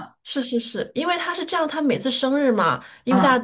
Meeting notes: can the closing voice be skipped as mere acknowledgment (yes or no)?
yes